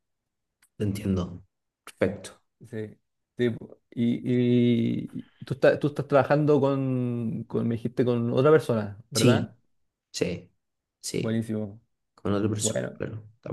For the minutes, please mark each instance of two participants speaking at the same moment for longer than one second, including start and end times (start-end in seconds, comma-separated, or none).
none